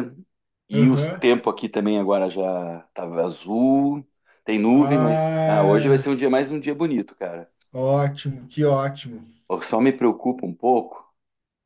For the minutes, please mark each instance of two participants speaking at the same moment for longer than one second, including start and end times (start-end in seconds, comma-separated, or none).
4.7-6.2